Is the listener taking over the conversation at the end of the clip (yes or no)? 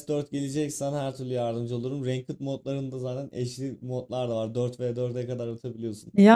no